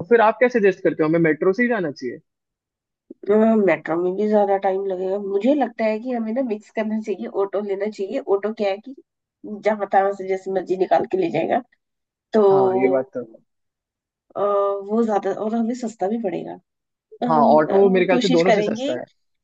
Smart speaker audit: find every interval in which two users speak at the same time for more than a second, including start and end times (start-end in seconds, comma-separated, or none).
17.3-18.9